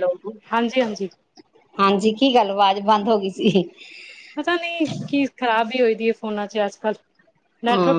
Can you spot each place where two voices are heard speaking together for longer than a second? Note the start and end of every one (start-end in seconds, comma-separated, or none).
none